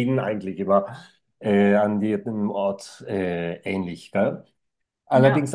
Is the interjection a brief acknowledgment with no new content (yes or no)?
yes